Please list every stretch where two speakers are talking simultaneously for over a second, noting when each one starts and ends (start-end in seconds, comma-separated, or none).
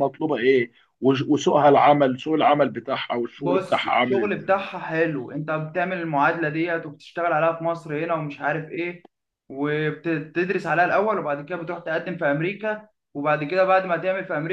3.4-4.7